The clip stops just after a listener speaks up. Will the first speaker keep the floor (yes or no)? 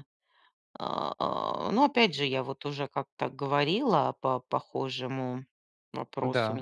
yes